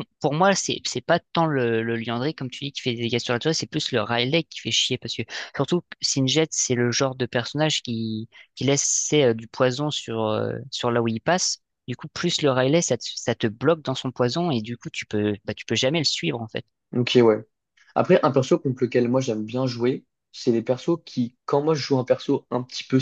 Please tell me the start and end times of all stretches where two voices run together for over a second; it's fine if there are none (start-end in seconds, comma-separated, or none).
none